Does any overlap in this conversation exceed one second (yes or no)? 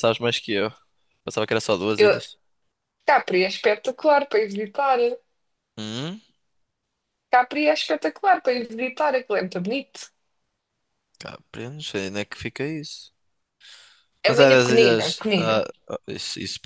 yes